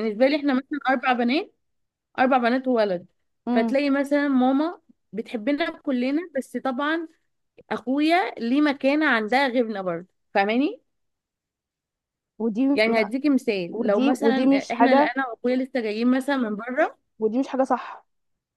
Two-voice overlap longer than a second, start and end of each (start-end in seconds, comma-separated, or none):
13.7-15.1